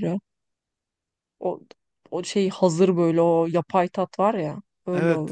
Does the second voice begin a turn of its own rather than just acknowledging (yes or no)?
yes